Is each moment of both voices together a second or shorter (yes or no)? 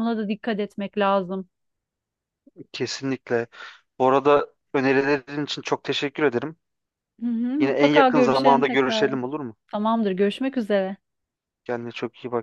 no